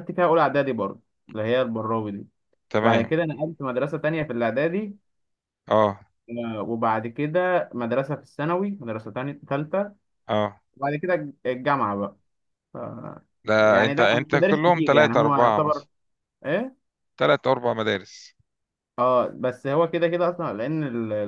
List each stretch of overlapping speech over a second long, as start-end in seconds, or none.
13.6-15.8